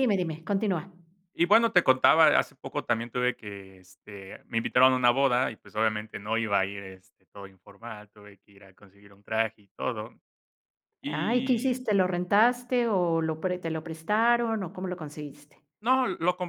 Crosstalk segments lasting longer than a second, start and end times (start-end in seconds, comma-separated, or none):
none